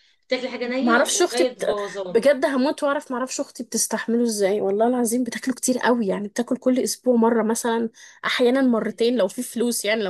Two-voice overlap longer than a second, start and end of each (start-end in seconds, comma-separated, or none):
0.8-2.2